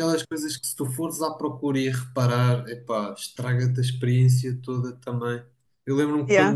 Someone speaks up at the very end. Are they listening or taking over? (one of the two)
listening